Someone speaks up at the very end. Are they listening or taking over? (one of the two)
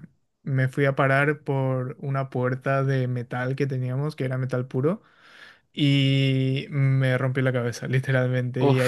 listening